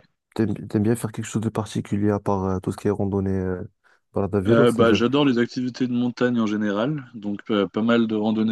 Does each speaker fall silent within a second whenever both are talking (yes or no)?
yes